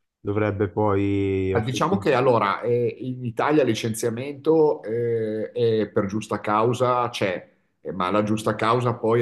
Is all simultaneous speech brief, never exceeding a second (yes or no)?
yes